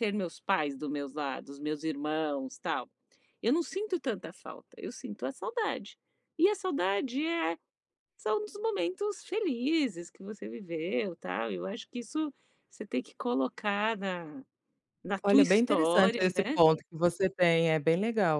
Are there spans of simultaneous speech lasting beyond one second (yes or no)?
yes